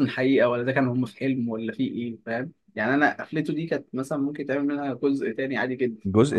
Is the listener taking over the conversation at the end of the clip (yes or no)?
yes